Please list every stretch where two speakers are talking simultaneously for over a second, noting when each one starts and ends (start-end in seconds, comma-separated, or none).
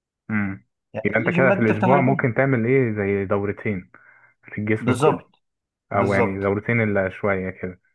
1.0-2.3